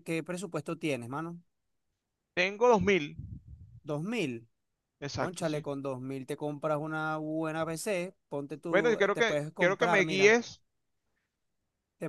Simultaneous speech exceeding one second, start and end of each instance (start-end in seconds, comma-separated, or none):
8.7-10.4